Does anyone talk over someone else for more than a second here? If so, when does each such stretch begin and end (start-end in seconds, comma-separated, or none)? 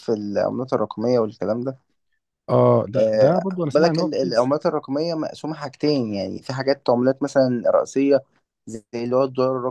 3.0-4.5